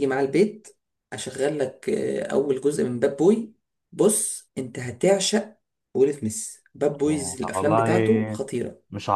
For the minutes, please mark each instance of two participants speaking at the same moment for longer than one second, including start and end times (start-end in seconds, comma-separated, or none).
7.1-8.4